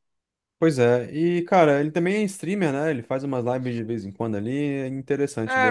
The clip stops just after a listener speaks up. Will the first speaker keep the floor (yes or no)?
no